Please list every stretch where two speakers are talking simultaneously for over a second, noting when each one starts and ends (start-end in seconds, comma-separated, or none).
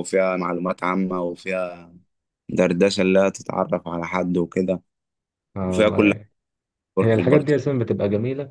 none